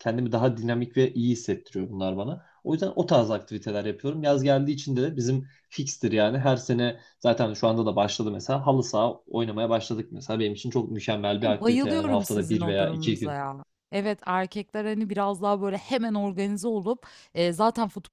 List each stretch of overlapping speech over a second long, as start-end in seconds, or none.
11.5-13.4